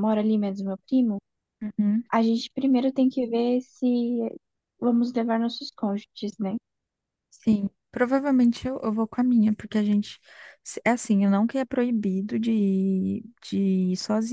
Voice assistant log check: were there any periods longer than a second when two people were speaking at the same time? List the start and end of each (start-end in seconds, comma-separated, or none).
none